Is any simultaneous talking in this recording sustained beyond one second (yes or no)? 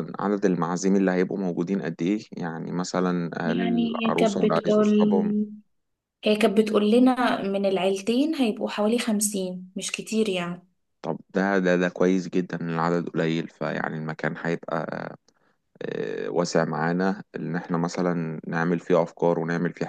yes